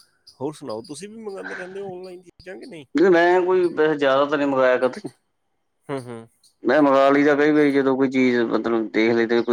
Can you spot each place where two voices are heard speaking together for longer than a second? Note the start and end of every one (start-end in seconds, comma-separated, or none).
none